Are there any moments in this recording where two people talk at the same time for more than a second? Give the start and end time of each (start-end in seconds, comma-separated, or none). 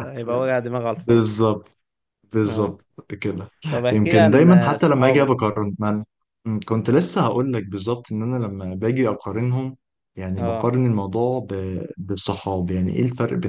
3.9-5.6